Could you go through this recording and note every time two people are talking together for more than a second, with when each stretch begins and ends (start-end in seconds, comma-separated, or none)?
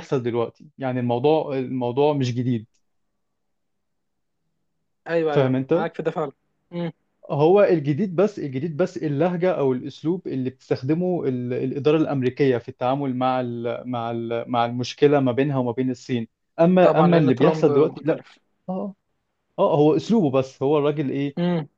16.8-18.2